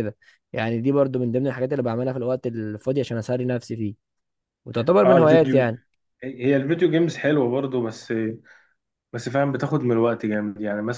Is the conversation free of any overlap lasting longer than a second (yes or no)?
yes